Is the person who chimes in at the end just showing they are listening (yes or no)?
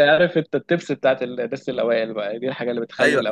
no